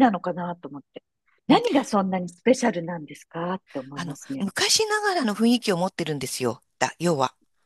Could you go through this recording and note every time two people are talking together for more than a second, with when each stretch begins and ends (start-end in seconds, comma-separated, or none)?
none